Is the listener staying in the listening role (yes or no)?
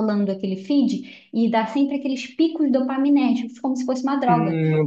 no